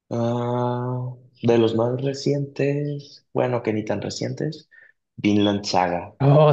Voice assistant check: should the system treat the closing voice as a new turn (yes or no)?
yes